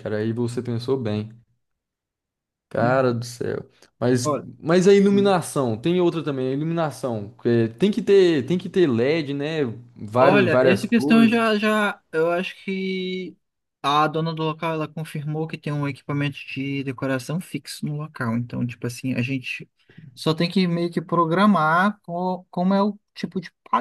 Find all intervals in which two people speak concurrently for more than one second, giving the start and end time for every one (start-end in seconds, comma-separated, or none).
10.2-11.4